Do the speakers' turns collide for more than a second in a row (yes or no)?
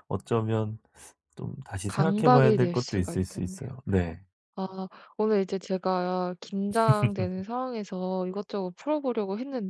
yes